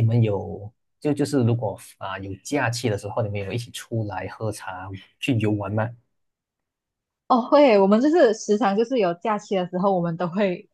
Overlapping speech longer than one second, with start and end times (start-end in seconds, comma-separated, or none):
none